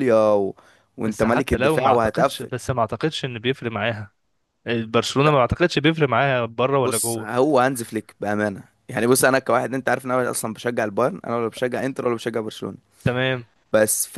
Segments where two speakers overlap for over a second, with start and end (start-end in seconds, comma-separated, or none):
1.0-2.5